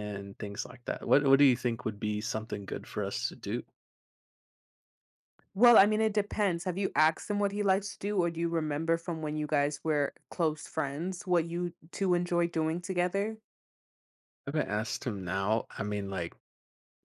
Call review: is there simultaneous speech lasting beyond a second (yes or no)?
no